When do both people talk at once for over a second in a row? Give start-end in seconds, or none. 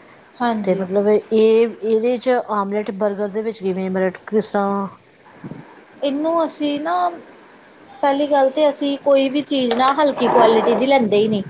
none